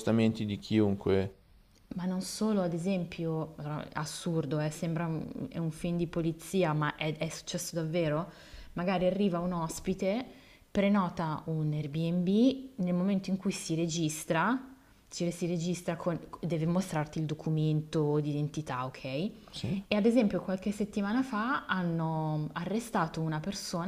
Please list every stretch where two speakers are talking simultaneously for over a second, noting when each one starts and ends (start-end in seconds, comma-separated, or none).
none